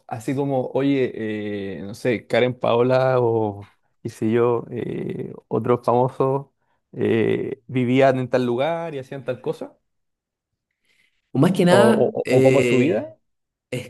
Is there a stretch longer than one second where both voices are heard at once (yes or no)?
yes